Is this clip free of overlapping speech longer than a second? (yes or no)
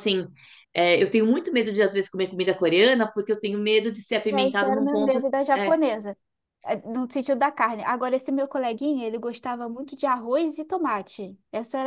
no